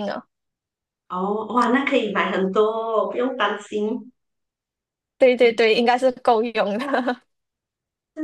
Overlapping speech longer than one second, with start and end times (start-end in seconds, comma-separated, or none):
none